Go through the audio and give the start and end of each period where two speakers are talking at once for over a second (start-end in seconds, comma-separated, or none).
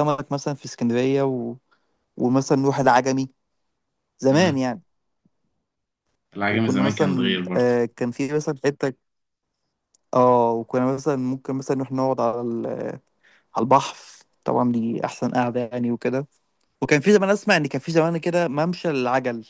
6.5-7.7